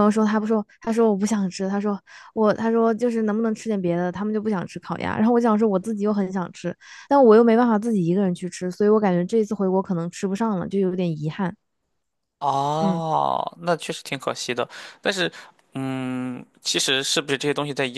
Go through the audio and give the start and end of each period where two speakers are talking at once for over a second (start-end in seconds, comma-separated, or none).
none